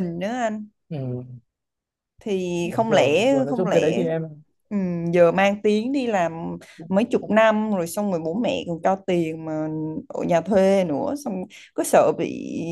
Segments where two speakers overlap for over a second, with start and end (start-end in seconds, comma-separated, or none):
2.6-4.0